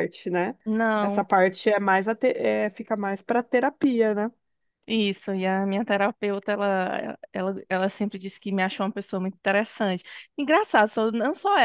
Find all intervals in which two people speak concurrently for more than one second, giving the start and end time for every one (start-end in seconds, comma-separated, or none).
none